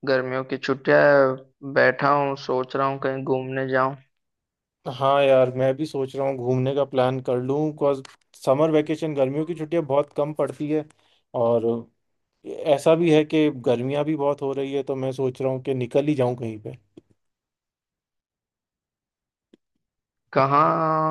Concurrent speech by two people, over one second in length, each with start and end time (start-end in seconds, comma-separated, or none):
none